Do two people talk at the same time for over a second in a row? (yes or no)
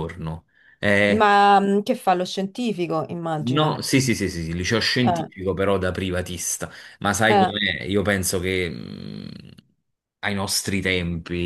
no